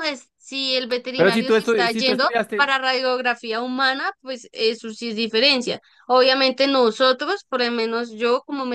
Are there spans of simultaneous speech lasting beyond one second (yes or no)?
yes